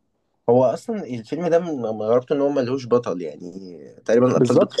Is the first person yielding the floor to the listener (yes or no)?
yes